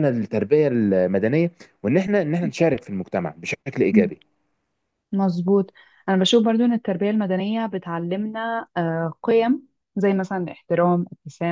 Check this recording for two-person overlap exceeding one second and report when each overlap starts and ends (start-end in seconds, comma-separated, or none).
none